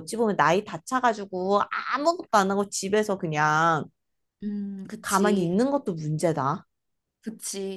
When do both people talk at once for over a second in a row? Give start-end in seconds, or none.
none